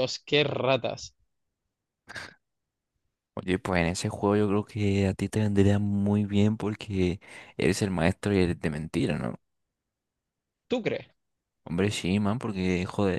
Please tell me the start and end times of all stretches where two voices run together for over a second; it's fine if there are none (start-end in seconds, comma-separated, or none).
none